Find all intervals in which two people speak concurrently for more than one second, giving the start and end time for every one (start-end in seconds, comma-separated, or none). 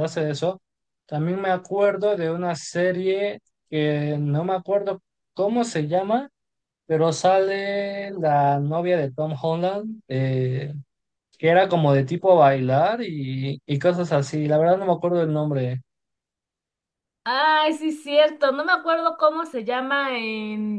none